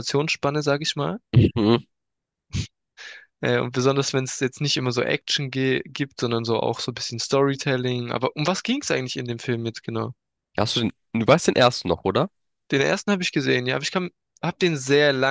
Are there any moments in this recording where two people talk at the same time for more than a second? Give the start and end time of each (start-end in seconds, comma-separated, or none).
none